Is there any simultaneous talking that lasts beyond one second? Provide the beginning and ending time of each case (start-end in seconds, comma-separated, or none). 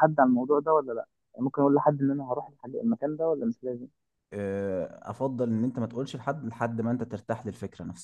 none